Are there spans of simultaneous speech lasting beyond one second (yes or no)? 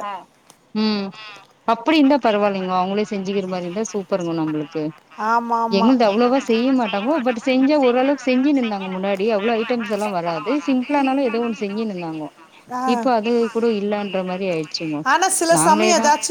no